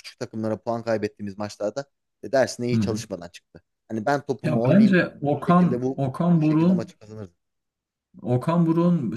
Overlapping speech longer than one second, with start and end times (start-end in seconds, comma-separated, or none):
4.4-6.9